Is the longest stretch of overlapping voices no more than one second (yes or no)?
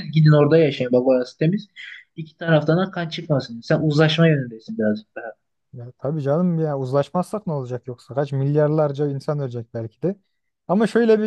yes